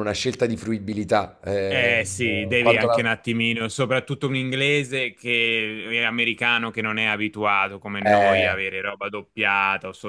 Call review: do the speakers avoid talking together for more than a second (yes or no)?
no